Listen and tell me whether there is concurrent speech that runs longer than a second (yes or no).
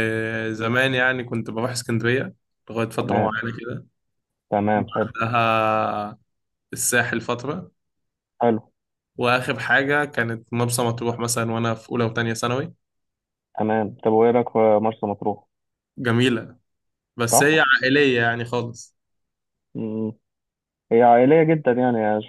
no